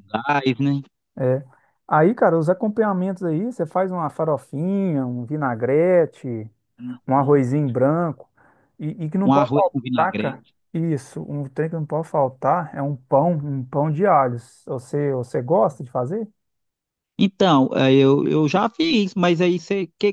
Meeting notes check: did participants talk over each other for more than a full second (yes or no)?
yes